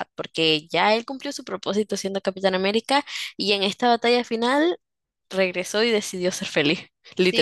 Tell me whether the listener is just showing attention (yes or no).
no